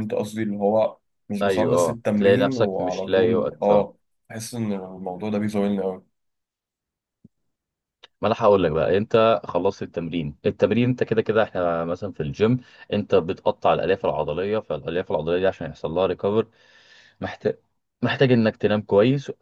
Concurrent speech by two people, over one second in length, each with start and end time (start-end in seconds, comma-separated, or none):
1.4-3.9